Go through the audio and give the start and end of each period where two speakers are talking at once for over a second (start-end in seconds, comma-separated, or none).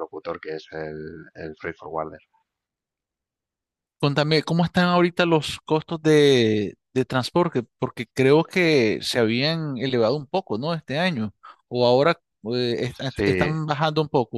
none